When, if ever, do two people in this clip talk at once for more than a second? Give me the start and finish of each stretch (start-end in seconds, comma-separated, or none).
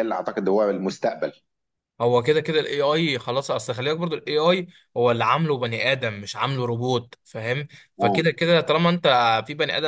none